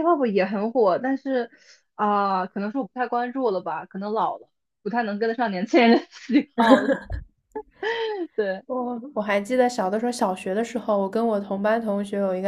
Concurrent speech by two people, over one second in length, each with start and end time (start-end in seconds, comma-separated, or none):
none